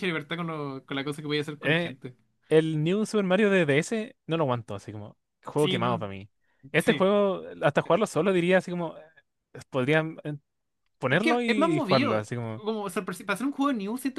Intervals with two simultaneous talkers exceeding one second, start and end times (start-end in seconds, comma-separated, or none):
11.1-12.6